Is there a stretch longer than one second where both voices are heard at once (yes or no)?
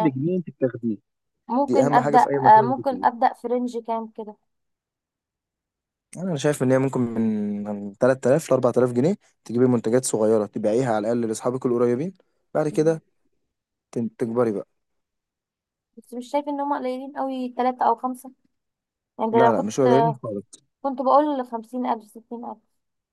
yes